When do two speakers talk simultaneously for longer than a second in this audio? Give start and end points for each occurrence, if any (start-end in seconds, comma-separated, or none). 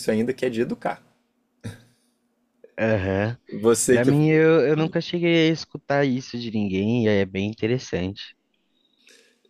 none